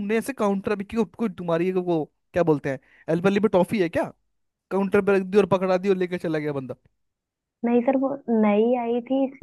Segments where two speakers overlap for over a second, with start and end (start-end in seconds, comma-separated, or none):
none